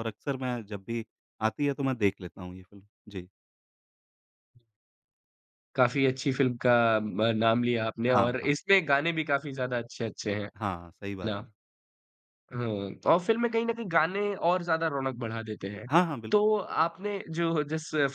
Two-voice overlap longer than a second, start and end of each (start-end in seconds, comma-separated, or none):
none